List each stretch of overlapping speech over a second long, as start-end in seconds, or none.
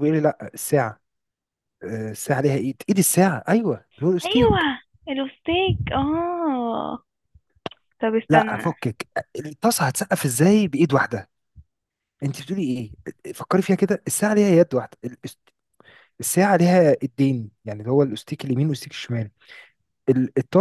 none